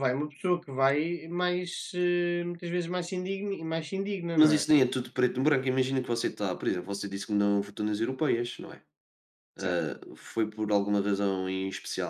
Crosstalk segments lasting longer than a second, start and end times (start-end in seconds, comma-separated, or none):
none